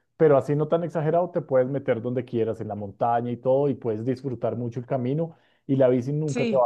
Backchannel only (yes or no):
yes